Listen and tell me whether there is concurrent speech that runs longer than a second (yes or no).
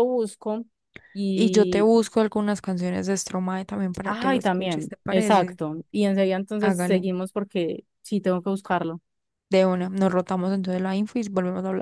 yes